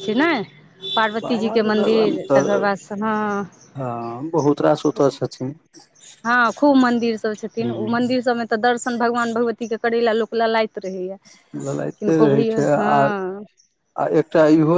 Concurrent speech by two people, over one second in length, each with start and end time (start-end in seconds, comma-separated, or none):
1.2-2.7